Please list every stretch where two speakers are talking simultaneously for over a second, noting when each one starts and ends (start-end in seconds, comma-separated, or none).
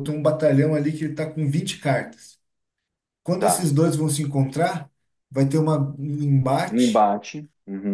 none